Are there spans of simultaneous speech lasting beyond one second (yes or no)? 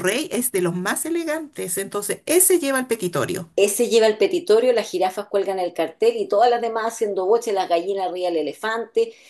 no